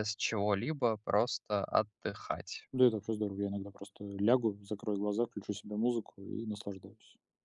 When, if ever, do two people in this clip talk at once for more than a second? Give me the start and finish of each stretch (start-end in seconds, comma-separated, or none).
none